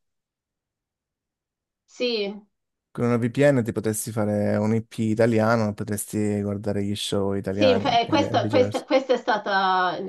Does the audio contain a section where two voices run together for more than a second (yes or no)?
yes